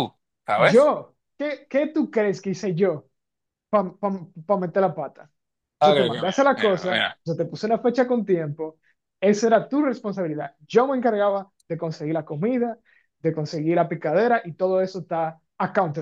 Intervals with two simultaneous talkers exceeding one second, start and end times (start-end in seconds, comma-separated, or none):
5.8-7.2